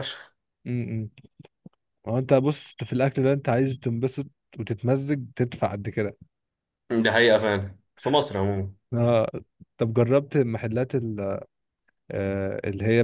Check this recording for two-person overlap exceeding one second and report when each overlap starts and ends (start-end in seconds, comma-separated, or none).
none